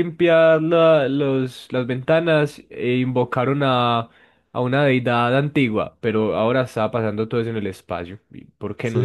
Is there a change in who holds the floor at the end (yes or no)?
yes